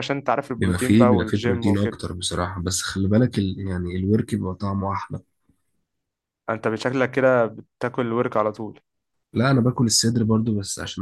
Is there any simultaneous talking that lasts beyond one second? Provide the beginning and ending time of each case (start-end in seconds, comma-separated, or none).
0.6-2.0